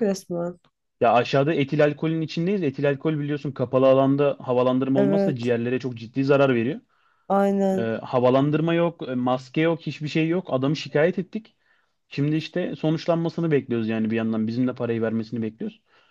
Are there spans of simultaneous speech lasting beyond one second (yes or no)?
no